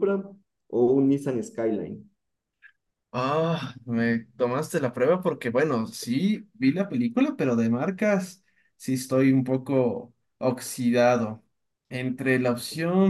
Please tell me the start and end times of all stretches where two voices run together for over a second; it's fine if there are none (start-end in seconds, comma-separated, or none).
none